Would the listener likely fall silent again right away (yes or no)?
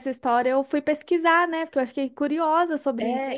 no